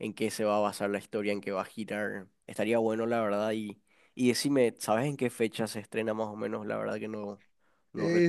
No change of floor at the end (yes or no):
no